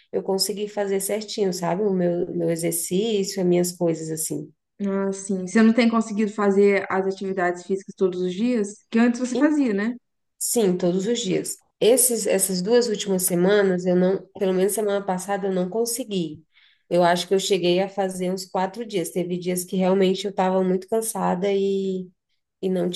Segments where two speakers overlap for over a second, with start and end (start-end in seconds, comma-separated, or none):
none